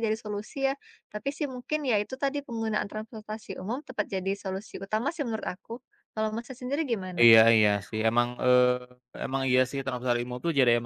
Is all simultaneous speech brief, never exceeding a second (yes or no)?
yes